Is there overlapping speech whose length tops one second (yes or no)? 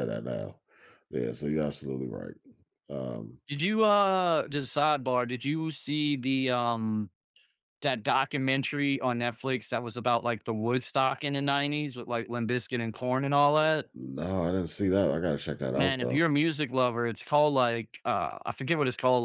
no